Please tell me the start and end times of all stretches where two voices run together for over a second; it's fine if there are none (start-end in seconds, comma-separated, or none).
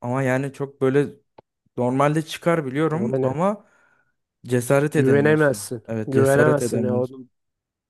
5.0-7.2